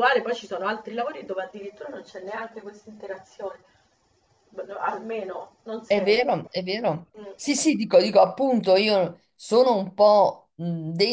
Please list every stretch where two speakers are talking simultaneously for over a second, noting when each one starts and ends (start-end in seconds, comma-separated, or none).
none